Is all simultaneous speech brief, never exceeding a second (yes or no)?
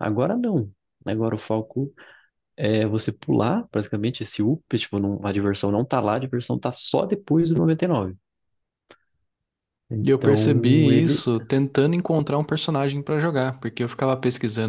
no